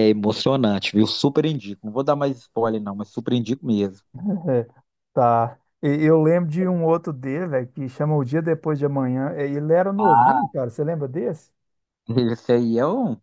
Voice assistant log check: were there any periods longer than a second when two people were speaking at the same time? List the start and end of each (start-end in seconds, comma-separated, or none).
none